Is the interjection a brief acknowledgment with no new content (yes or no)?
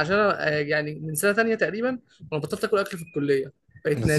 no